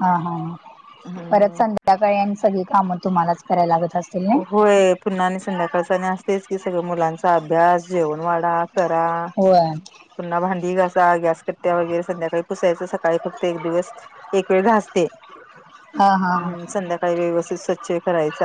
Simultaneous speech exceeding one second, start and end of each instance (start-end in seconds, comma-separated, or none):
none